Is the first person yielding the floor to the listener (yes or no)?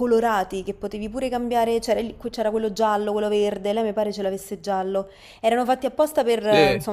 yes